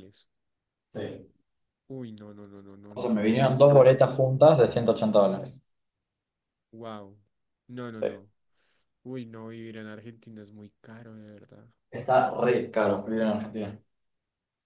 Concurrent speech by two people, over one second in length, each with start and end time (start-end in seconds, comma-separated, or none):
3.0-4.5